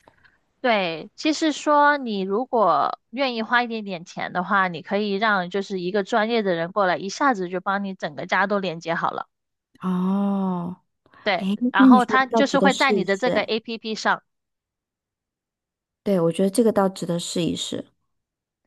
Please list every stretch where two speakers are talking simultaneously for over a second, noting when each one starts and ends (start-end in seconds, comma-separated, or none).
11.4-13.5